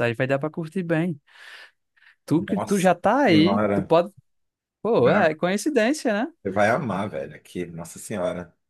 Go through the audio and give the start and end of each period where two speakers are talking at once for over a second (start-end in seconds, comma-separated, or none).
2.4-4.0